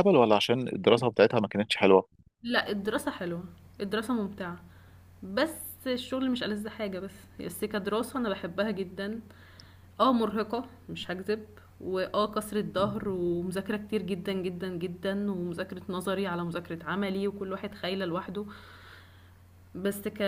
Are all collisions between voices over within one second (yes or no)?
yes